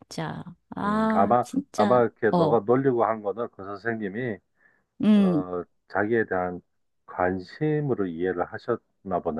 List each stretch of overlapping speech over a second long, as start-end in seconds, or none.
0.8-2.6